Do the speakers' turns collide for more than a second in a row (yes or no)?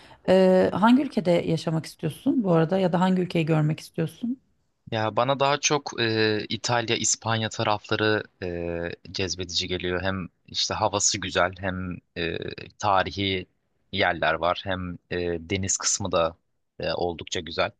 no